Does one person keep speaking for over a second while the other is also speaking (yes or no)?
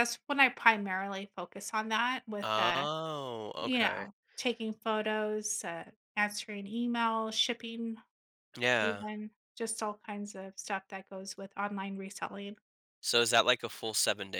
no